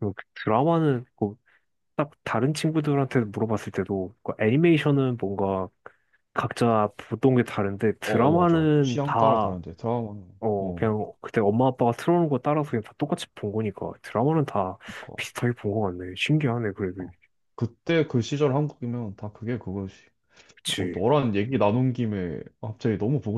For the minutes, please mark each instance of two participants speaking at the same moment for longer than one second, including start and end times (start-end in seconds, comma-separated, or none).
8.1-9.6